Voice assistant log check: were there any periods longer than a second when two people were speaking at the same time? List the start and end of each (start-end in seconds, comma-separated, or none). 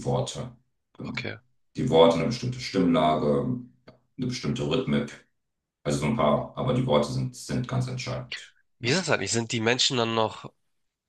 none